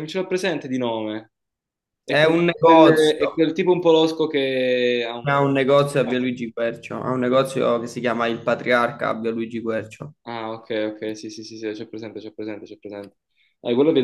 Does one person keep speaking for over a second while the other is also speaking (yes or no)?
yes